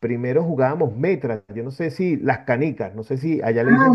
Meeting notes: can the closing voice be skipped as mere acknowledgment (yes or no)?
yes